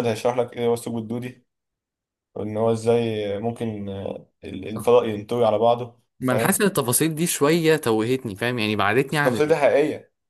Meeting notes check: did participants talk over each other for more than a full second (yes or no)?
no